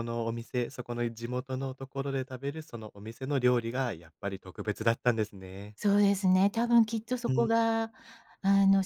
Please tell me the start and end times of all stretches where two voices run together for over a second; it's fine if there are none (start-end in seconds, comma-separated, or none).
none